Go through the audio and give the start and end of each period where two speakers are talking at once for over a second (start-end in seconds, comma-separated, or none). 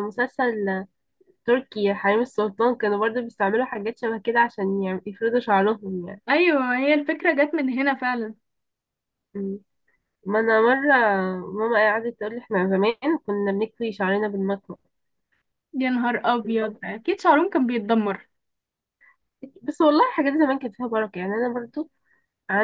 none